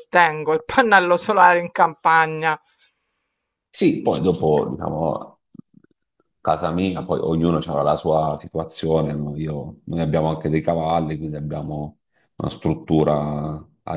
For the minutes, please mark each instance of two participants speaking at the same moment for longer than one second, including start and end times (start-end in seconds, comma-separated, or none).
none